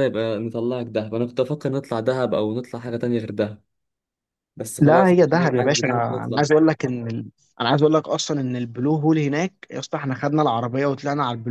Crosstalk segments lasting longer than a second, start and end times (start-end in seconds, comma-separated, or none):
4.8-6.4